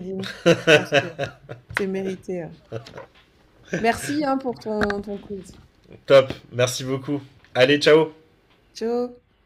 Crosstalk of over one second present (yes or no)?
no